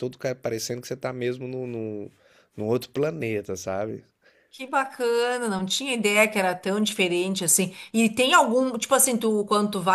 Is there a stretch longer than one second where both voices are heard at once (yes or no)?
no